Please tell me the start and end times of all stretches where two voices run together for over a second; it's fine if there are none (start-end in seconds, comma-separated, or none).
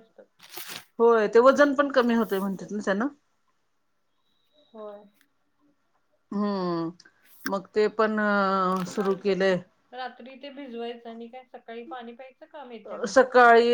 1.2-2.7